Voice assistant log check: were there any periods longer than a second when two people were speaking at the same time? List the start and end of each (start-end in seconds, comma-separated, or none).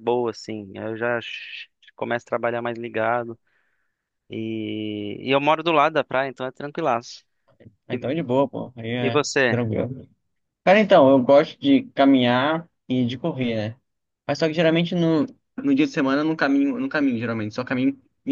none